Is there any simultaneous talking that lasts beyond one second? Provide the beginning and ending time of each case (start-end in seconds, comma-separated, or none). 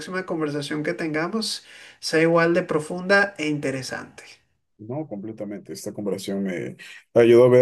none